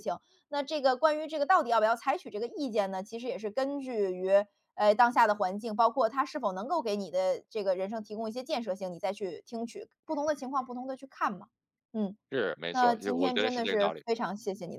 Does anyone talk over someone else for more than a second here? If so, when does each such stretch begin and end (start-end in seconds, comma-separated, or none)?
12.7-14.0